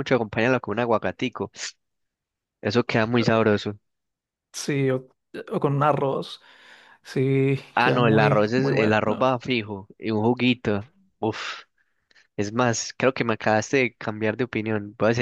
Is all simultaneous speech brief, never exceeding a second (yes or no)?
no